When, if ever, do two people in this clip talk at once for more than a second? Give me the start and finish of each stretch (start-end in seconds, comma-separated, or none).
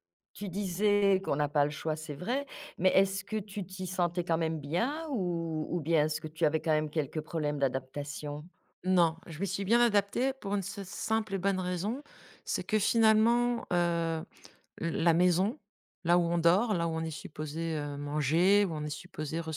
none